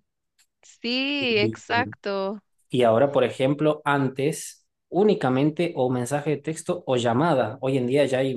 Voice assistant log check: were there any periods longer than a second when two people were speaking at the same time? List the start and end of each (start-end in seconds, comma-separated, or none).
none